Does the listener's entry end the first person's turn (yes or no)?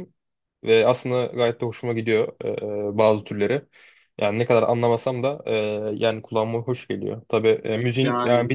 no